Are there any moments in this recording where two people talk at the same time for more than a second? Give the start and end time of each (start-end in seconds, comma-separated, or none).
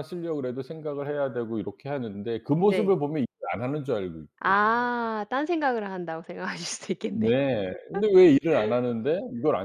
none